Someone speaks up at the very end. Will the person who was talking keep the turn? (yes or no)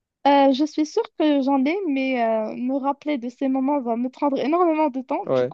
yes